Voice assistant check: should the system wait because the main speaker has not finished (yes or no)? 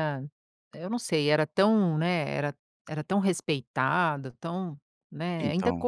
yes